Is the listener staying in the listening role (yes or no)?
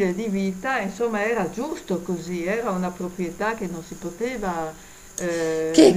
no